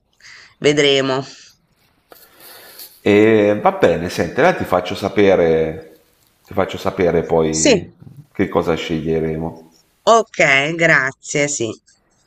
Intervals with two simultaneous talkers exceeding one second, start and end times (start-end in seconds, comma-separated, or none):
none